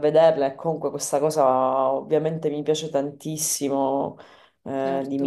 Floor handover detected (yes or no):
no